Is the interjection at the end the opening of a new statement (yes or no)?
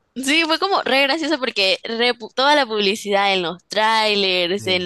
no